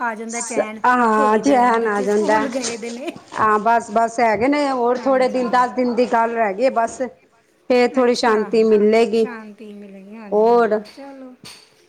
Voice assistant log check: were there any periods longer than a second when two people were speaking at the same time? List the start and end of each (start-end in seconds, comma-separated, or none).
0.8-2.4